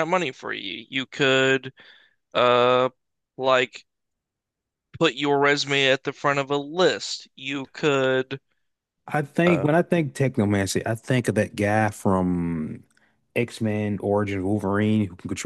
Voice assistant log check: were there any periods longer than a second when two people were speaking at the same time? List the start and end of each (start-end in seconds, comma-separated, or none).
none